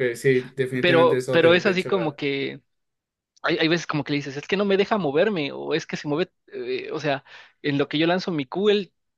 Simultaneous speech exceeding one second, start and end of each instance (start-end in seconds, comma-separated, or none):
0.8-2.2